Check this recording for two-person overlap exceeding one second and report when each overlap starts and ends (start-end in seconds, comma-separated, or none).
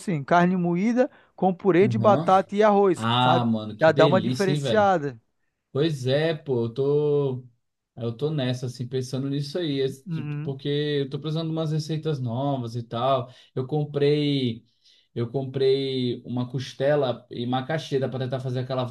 3.0-5.0